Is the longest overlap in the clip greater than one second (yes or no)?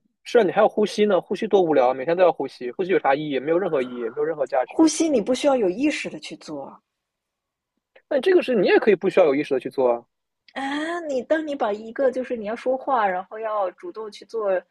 no